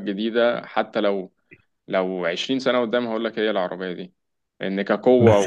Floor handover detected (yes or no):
no